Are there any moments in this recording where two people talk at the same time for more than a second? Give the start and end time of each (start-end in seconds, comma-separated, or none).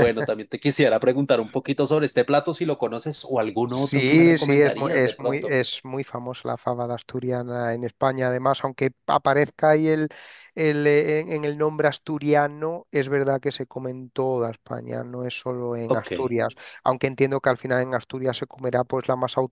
3.7-5.6